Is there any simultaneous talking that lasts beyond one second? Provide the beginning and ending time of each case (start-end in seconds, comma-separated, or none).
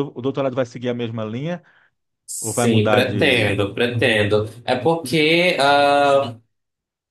2.4-3.6